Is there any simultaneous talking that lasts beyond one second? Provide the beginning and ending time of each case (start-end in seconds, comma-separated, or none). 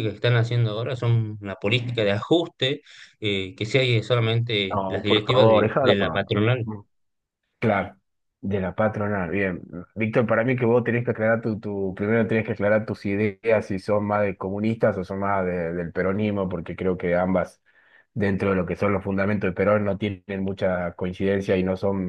4.7-6.3